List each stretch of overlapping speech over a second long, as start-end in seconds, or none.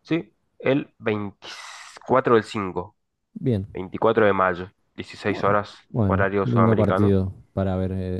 5.2-7.2